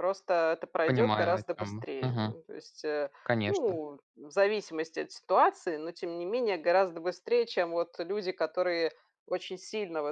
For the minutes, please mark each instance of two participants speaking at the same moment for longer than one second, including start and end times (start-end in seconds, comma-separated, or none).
0.9-2.4